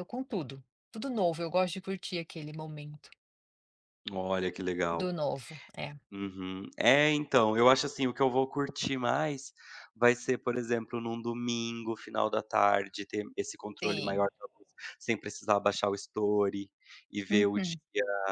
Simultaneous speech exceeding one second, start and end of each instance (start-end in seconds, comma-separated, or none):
none